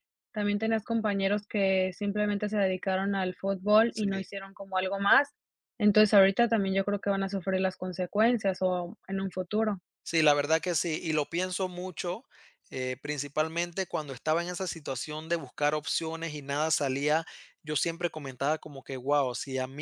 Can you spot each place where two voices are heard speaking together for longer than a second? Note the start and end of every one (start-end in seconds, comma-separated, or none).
none